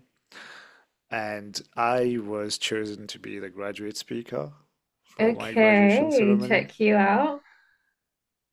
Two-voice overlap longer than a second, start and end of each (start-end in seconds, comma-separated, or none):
5.2-6.7